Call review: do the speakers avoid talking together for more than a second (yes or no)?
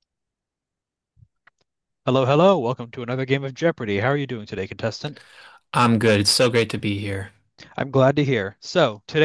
yes